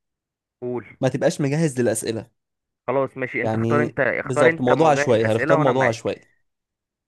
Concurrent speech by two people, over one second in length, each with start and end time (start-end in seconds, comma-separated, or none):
3.4-6.1